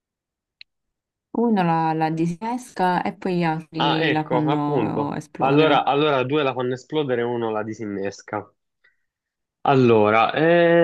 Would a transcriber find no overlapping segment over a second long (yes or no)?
no